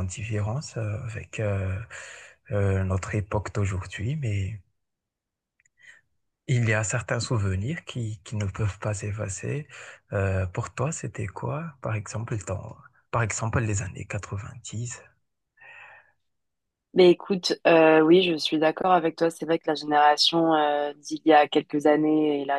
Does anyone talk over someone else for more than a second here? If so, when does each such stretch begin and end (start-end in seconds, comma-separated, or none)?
none